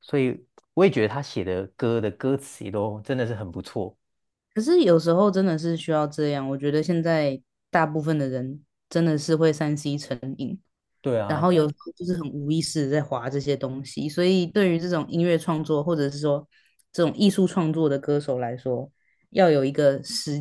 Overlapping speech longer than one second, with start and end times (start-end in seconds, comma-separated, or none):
none